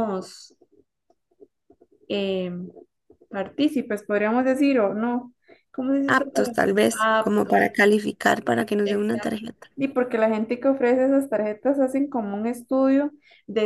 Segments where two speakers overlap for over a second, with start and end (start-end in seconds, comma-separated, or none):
6.1-7.7